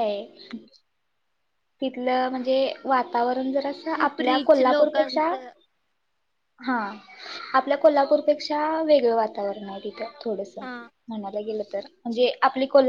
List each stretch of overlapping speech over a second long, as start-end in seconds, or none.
3.9-5.3